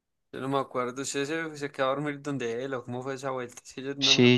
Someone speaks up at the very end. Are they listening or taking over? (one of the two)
taking over